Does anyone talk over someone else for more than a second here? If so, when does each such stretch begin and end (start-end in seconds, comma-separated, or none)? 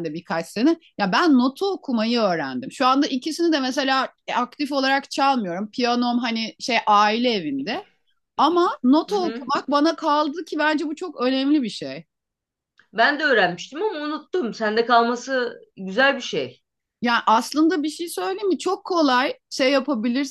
none